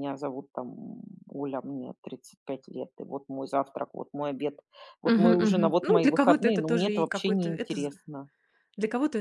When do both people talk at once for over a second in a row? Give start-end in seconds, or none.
5.0-7.9